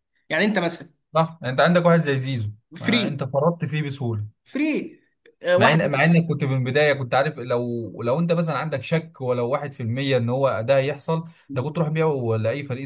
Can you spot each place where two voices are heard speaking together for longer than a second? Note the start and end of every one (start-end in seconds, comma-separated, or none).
none